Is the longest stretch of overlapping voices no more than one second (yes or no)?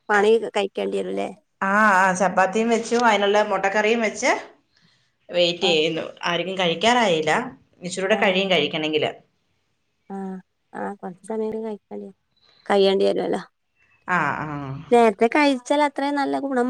yes